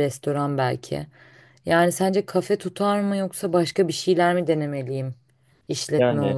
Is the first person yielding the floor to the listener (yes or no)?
yes